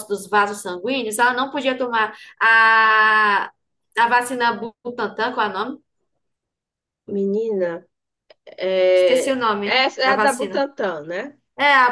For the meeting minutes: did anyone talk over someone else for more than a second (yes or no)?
yes